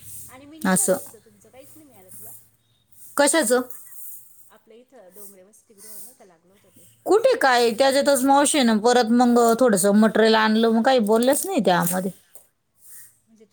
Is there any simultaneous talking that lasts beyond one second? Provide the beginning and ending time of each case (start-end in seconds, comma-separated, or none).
none